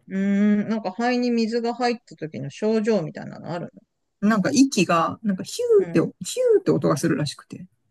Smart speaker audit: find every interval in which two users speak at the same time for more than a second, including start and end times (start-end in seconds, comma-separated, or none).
none